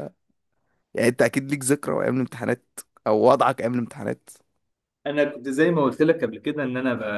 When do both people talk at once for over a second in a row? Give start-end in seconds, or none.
none